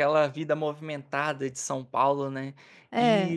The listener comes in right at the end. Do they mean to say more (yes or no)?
no